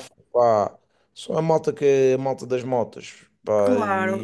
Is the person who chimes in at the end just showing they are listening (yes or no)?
no